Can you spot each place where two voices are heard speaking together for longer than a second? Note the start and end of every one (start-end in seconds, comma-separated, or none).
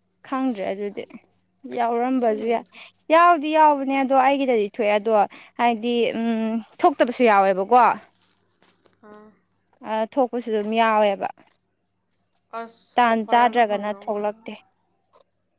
12.9-14.4